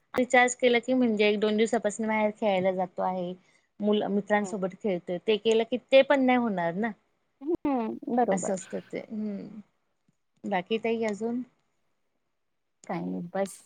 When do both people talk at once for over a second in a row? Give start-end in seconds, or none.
none